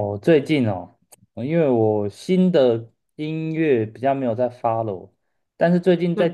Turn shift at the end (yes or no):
no